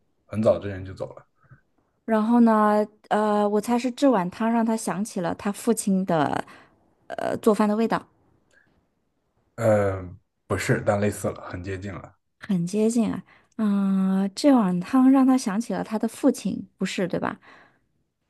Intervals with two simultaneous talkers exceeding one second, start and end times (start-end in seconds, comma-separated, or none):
none